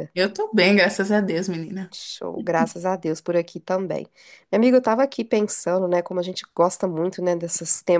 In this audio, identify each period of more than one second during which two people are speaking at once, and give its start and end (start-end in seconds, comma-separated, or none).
none